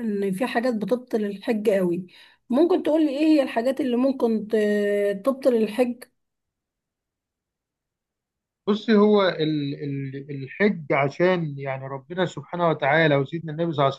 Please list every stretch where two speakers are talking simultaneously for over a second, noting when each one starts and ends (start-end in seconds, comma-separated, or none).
none